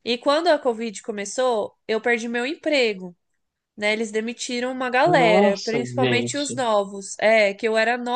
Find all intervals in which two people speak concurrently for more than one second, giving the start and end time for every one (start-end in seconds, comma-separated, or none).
5.0-6.6